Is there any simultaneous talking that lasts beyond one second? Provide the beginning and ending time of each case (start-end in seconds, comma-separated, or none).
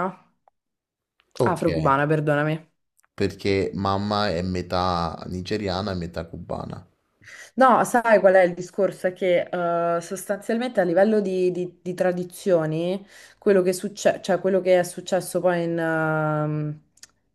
none